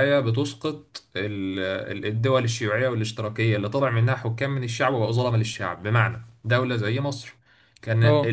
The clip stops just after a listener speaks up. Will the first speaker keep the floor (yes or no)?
yes